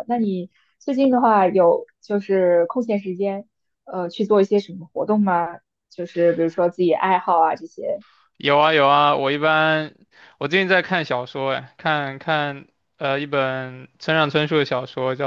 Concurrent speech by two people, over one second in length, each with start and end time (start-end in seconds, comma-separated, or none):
none